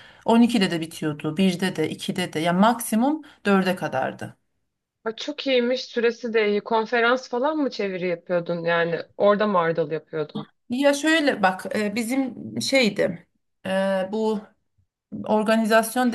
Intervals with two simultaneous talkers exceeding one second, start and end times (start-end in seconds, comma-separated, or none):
none